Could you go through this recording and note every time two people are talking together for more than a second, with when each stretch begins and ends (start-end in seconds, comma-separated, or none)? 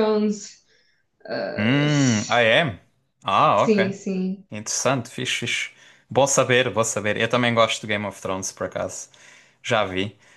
none